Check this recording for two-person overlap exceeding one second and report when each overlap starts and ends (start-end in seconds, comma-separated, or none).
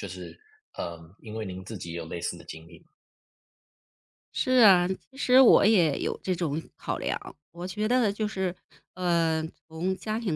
none